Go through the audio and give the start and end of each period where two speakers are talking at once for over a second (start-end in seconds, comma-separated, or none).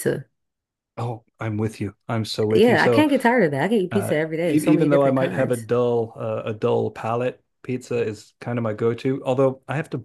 3.9-5.7